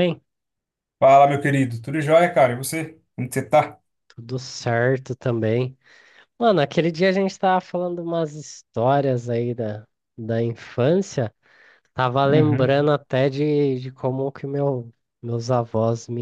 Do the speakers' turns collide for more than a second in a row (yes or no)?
no